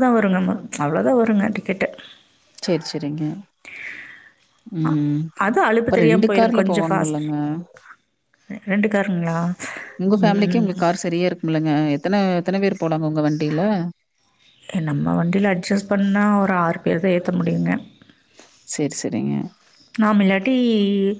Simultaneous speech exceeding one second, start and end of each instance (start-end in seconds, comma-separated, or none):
5.8-7.2